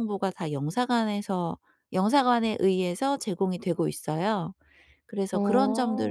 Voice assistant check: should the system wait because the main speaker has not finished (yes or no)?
yes